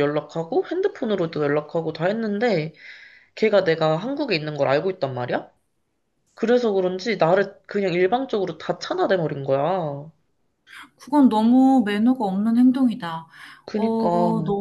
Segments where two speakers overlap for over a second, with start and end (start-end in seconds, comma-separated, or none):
none